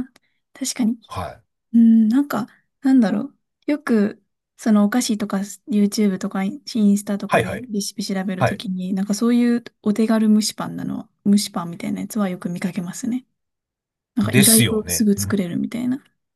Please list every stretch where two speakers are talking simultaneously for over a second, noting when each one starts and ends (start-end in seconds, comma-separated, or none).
14.2-15.4